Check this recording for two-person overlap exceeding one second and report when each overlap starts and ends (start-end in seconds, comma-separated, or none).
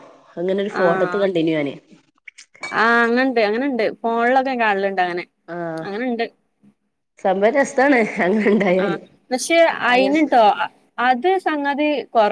none